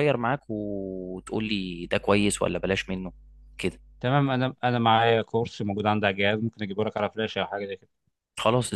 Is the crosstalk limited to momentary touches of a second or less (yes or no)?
yes